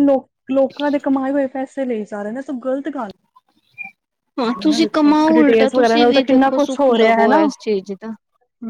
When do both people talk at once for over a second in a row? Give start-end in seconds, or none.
4.6-7.4